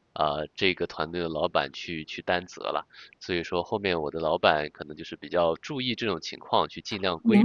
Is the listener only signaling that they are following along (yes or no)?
no